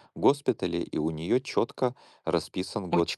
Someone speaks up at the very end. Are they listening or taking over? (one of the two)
listening